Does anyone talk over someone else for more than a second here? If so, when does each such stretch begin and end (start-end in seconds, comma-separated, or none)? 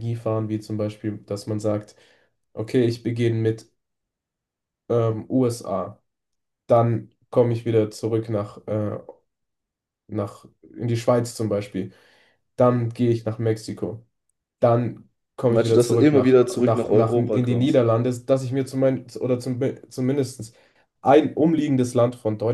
15.5-17.8